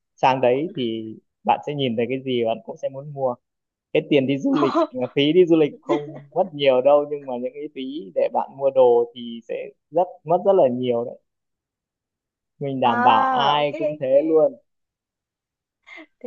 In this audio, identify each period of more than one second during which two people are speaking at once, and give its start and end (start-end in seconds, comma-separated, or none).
12.8-14.1